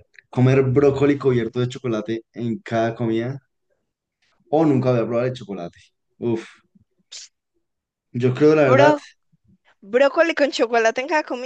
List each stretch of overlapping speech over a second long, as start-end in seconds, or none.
none